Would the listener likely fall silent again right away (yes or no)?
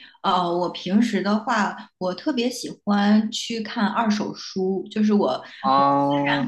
yes